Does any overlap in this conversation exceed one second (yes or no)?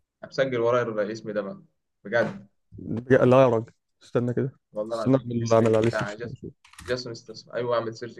yes